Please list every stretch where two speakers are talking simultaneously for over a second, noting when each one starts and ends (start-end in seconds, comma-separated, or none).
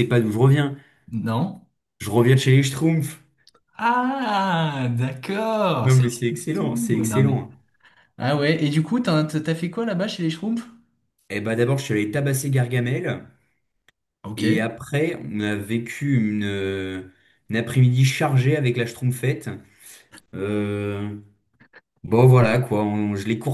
5.8-7.4